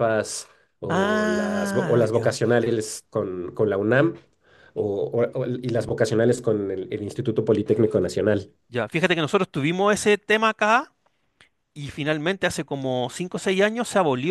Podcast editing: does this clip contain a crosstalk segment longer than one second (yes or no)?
yes